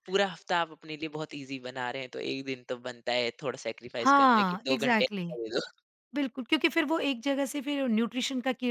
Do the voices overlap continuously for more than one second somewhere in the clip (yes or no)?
yes